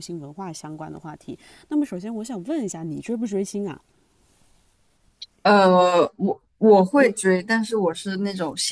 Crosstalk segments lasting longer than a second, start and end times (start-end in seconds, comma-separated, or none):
none